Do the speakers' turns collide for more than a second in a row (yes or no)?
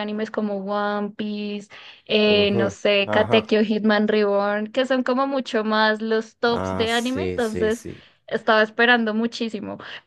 yes